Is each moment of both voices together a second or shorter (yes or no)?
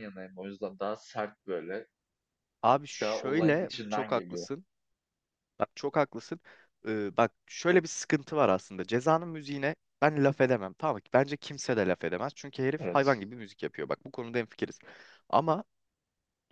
no